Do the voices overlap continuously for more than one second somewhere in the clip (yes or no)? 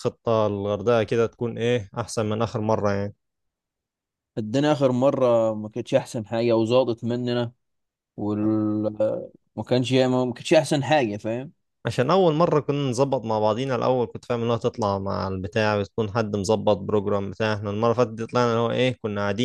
no